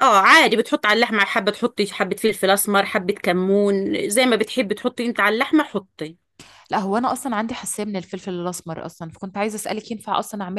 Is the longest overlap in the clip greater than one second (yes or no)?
no